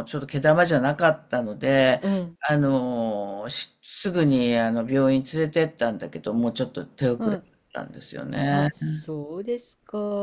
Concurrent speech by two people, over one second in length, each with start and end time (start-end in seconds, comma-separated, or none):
none